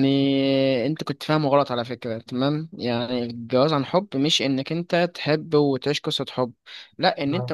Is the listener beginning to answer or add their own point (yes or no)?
no